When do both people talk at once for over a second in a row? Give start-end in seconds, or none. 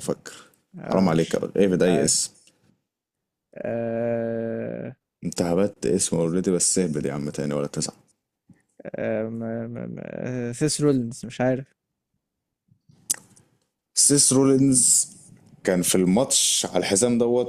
0.8-2.1